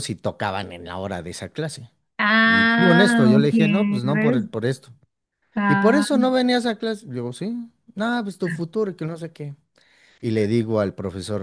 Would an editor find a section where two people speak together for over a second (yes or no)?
yes